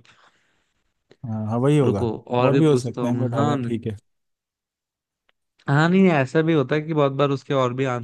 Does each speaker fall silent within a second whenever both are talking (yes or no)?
no